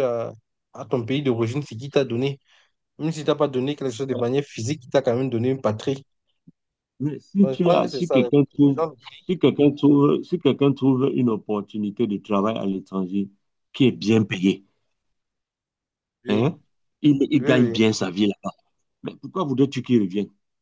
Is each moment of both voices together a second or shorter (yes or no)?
no